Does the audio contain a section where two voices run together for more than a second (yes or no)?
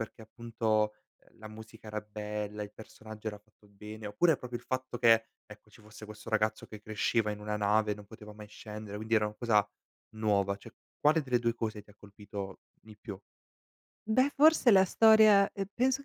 no